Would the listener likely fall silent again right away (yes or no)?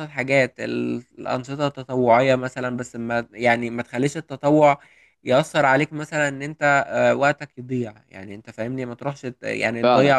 yes